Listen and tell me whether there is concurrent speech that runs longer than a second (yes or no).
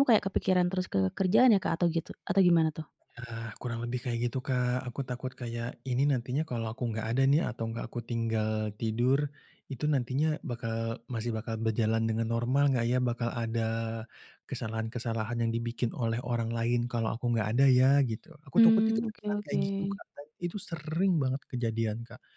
yes